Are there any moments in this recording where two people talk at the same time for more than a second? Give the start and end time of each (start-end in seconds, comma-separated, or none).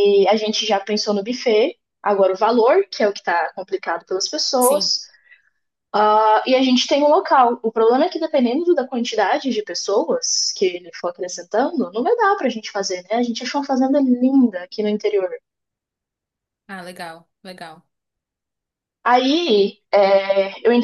none